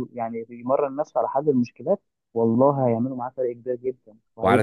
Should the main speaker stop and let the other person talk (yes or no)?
yes